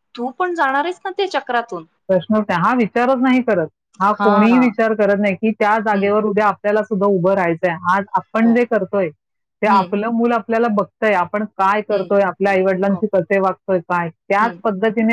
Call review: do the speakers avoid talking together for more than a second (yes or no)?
yes